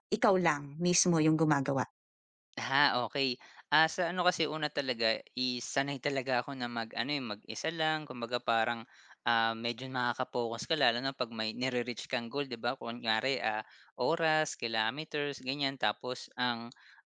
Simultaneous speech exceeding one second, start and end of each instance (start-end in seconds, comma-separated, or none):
none